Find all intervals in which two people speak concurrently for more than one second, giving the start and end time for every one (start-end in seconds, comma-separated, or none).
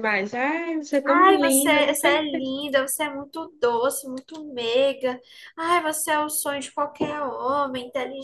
1.1-2.5